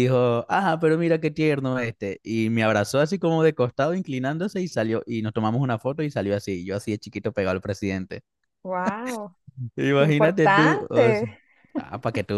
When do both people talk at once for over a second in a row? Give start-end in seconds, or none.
10.0-11.2